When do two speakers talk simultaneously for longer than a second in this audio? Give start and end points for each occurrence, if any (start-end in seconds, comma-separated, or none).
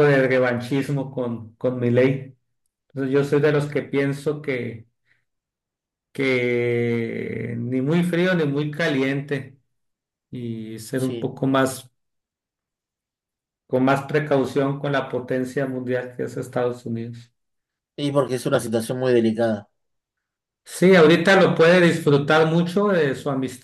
none